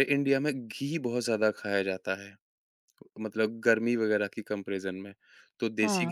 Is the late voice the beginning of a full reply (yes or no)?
yes